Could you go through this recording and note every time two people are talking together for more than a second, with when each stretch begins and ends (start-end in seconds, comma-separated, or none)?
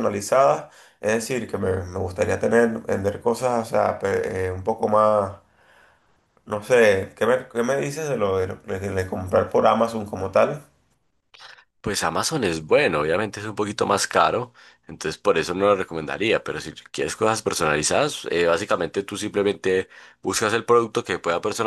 none